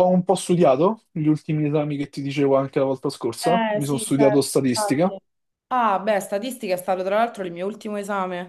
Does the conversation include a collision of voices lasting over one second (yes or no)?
yes